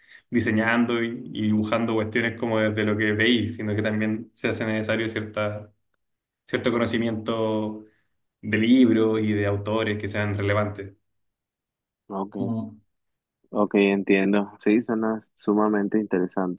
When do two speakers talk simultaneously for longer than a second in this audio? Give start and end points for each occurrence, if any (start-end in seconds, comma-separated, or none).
none